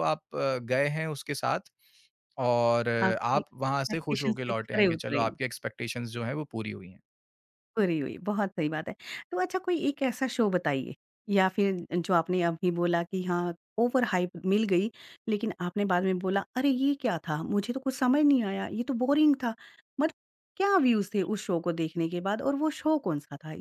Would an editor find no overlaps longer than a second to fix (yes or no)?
no